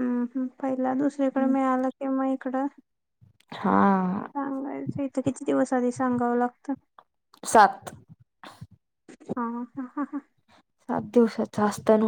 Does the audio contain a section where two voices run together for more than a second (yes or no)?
no